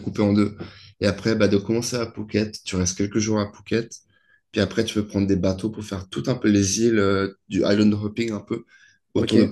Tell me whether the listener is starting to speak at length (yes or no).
no